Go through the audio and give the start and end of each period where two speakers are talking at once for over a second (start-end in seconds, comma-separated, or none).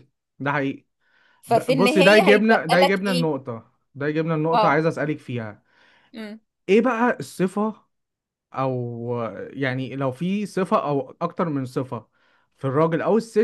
1.4-3.3